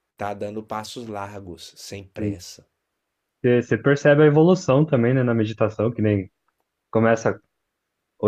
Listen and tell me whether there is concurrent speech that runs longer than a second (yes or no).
no